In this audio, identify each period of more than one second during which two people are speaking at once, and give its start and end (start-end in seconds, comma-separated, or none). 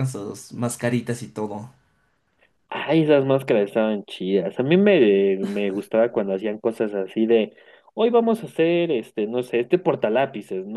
none